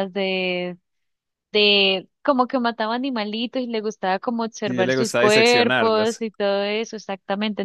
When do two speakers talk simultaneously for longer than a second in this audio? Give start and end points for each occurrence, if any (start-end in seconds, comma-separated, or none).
4.7-6.2